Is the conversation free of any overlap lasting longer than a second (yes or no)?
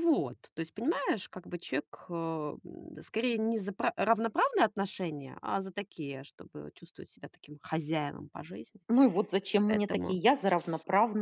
yes